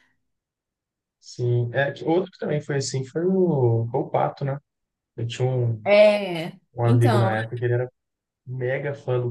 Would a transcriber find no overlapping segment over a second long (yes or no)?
yes